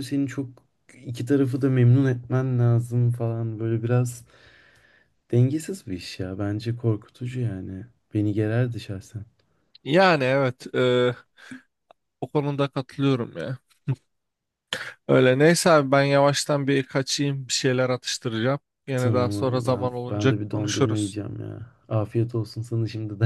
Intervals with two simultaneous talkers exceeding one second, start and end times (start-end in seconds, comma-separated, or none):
19.0-21.2